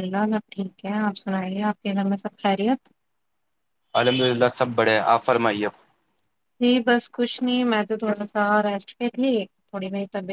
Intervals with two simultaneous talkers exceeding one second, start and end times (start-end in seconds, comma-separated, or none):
none